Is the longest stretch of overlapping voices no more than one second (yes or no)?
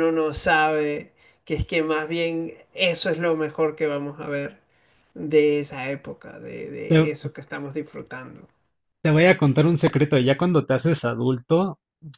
yes